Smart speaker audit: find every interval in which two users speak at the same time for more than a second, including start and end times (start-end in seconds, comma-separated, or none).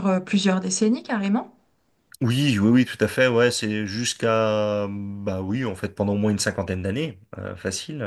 none